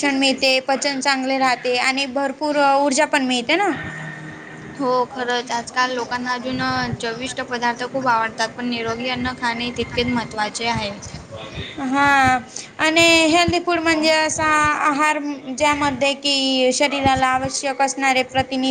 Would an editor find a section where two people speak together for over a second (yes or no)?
no